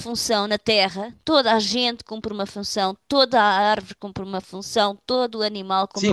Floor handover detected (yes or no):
yes